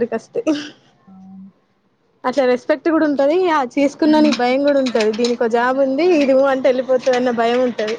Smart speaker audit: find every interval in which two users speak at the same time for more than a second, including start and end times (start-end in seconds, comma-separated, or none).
3.9-6.3